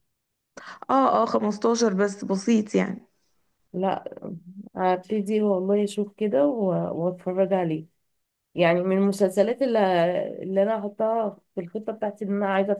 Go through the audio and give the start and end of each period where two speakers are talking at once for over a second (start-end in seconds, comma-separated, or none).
none